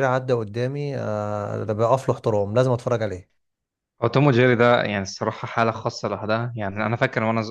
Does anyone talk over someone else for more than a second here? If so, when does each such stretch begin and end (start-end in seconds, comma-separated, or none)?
none